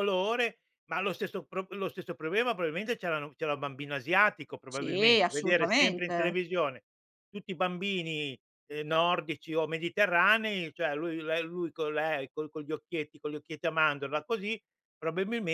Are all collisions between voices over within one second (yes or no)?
no